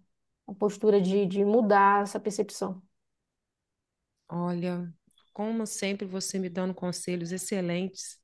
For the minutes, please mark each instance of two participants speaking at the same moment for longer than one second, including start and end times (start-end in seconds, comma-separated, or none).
none